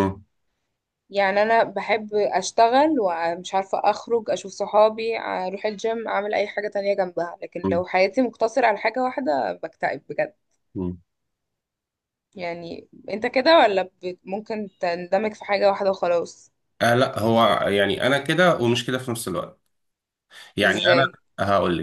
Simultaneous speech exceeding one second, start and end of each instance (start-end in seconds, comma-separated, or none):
none